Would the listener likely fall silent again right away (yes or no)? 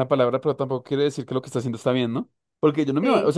yes